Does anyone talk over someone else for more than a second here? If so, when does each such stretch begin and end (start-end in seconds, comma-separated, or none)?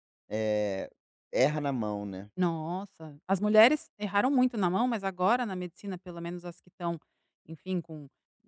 none